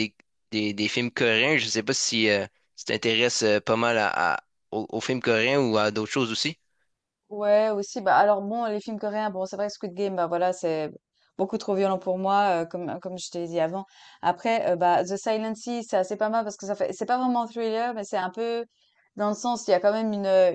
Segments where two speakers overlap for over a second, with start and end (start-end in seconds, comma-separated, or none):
none